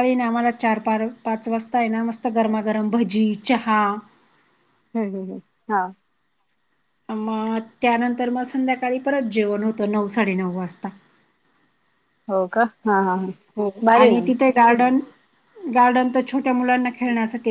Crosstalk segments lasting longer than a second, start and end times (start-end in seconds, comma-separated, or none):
none